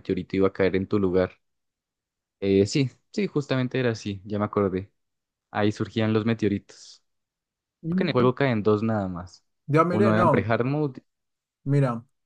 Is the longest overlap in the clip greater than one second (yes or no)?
no